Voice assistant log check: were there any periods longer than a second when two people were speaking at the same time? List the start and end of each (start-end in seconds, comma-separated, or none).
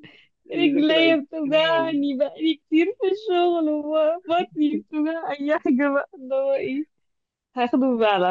0.6-1.9